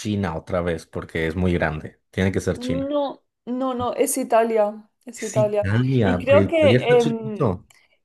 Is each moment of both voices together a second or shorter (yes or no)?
no